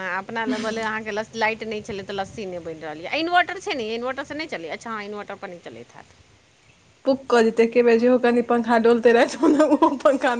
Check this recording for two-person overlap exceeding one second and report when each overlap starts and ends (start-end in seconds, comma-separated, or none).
none